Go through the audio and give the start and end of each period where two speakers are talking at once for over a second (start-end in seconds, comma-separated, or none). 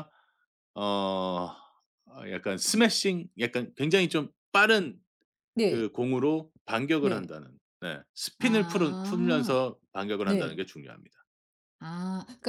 8.4-9.6